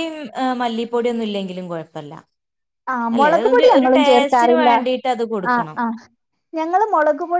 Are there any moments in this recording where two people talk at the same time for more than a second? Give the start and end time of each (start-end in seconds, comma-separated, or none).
3.1-4.7